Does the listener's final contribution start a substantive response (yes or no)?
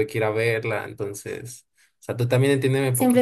yes